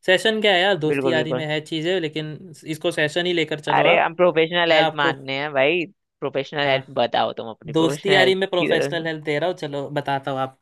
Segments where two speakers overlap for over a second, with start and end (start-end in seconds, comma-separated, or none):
7.8-9.1